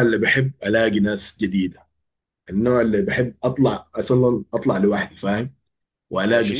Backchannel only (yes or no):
yes